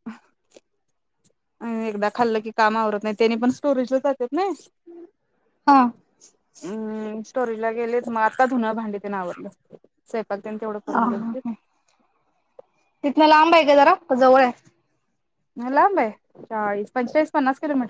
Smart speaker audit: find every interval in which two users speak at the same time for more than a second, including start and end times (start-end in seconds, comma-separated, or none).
none